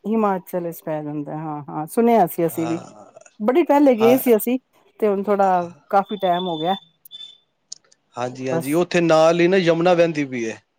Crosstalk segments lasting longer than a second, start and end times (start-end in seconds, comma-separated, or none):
none